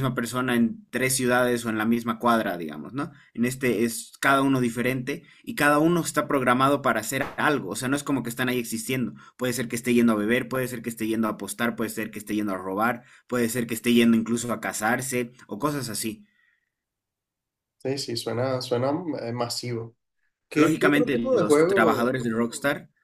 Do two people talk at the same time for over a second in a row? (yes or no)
yes